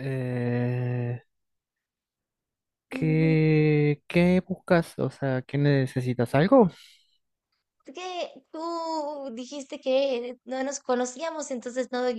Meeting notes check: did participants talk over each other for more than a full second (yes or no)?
no